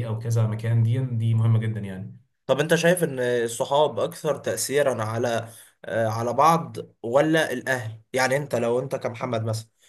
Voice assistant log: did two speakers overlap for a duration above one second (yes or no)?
no